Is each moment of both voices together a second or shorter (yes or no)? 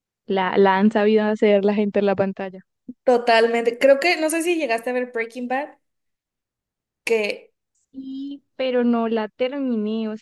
yes